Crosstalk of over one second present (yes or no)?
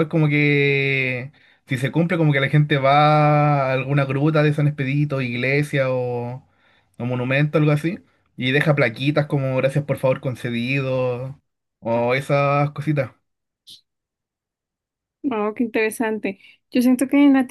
no